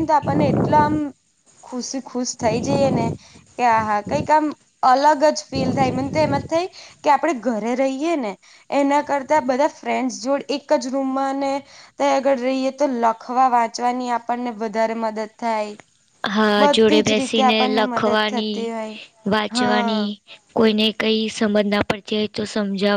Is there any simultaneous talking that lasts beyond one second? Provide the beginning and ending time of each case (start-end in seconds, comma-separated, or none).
16.6-18.6